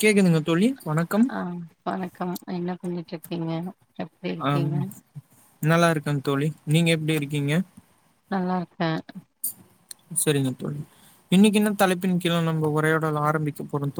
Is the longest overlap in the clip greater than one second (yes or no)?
no